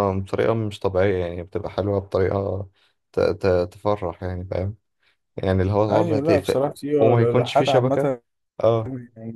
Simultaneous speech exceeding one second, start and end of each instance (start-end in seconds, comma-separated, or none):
5.9-8.1